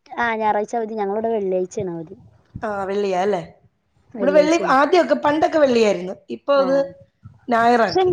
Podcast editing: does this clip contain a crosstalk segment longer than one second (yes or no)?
no